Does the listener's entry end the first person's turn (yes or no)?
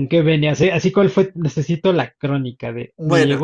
no